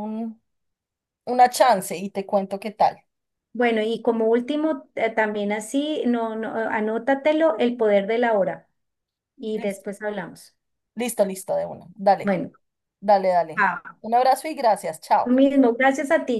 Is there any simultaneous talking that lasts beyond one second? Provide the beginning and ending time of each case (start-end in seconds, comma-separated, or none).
none